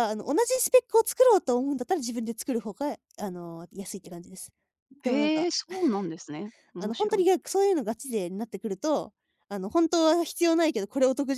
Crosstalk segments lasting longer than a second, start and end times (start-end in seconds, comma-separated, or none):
none